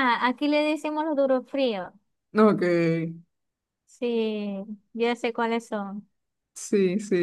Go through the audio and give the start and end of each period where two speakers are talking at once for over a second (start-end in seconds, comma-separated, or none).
none